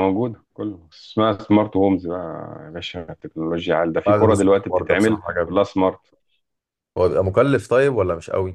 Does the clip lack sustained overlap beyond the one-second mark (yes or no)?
no